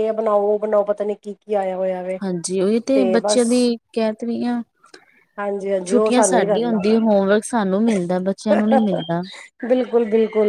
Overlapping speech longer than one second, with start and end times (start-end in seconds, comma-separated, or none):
5.9-7.2